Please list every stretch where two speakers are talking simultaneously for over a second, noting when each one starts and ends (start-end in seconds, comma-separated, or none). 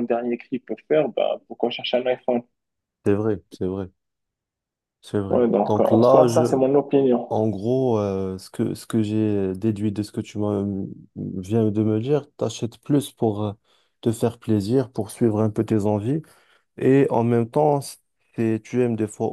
5.3-6.6